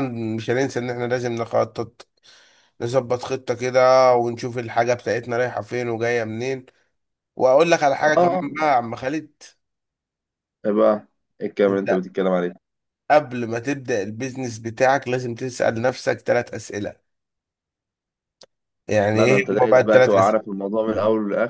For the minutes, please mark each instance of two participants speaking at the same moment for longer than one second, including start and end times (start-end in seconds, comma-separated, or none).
19.1-20.4